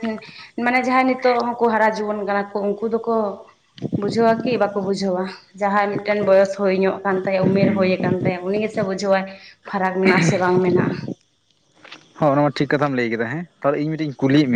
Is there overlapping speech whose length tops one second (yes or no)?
no